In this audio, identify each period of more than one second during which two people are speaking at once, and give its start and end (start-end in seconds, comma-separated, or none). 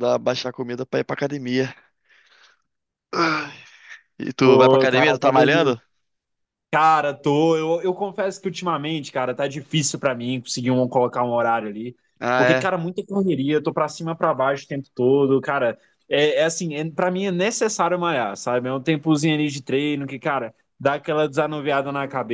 4.4-5.7